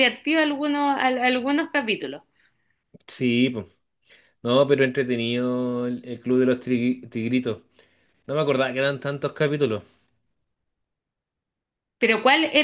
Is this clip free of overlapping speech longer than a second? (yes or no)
yes